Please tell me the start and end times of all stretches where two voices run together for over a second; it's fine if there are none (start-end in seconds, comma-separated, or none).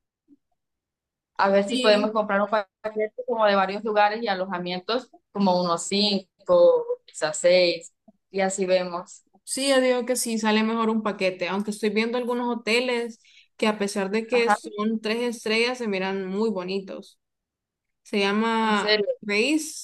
none